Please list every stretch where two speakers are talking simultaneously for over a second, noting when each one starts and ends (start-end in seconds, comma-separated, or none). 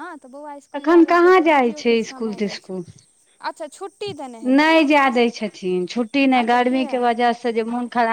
none